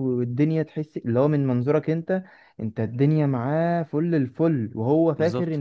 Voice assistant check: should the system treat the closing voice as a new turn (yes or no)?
no